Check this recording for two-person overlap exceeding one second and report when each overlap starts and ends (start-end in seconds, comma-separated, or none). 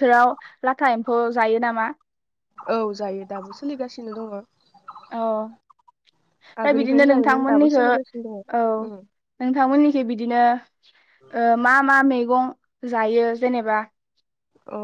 6.6-8.4